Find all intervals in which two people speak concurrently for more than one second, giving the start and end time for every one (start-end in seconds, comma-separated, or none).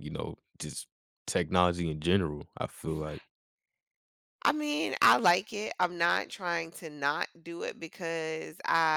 none